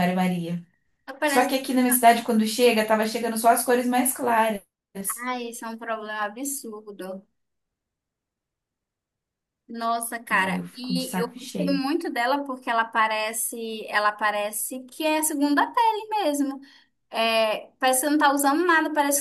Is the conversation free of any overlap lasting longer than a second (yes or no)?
no